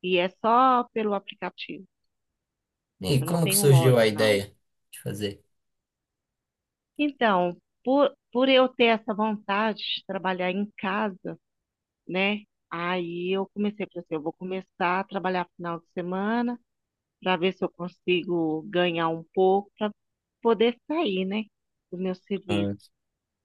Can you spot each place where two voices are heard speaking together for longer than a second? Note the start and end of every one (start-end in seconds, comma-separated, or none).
3.2-4.4